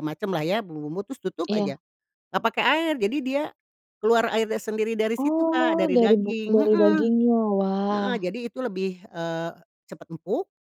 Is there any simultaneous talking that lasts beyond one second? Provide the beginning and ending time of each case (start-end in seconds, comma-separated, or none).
5.2-7.0